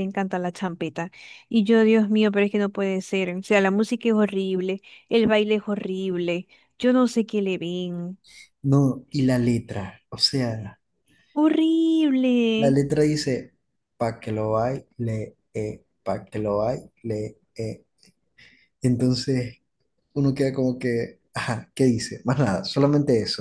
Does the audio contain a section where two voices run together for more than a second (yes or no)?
no